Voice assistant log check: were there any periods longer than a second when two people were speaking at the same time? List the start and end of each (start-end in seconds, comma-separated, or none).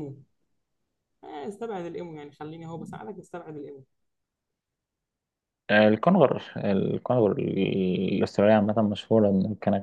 none